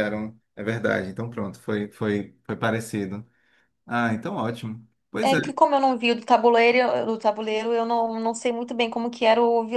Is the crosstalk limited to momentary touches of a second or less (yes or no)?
yes